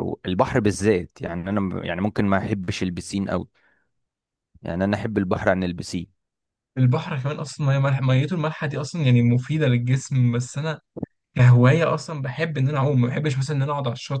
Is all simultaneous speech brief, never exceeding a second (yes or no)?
yes